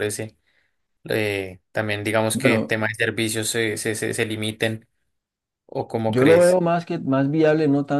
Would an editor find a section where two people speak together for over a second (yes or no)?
no